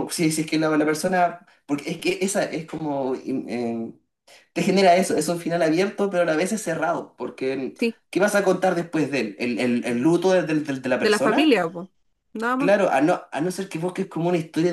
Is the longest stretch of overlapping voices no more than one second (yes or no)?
yes